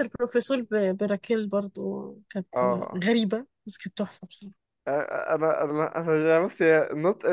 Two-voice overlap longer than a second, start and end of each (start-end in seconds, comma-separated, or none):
none